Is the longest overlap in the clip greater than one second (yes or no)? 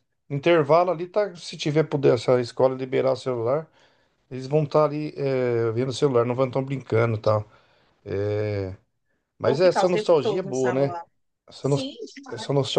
yes